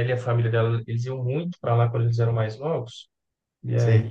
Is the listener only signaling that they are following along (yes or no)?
yes